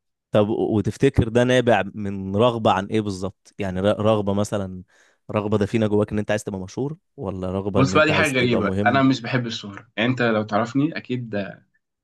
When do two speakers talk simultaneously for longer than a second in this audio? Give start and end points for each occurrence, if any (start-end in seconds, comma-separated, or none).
7.8-9.0